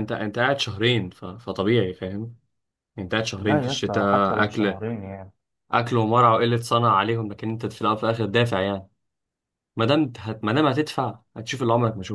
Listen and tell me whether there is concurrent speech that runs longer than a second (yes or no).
yes